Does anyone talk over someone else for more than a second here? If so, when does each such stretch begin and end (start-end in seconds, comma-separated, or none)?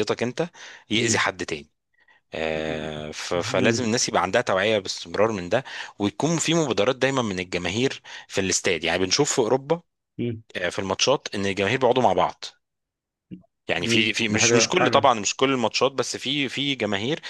13.8-15.1